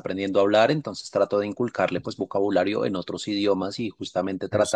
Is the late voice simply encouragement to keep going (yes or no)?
yes